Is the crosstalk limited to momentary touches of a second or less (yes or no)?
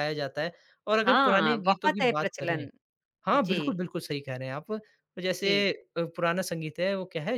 no